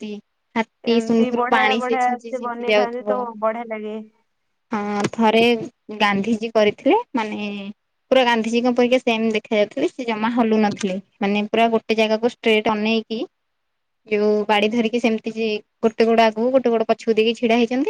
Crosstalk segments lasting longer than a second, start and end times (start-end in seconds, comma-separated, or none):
1.0-3.2